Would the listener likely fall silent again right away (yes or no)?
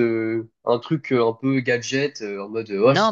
no